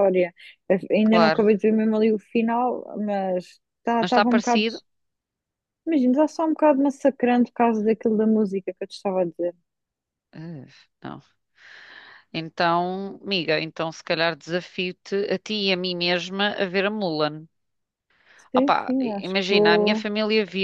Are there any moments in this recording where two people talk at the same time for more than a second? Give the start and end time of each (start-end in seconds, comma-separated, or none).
18.5-20.1